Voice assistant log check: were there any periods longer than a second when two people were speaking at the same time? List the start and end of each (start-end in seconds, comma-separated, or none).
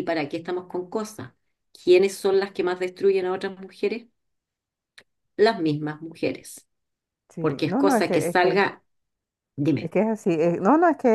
7.4-8.6